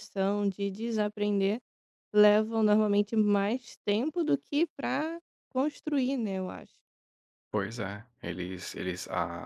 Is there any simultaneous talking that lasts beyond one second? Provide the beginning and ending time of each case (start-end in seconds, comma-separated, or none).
none